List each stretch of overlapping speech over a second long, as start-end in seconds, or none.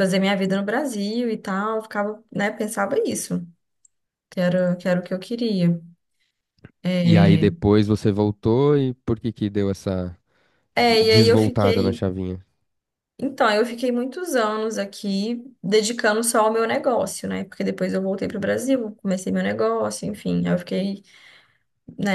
10.8-12.0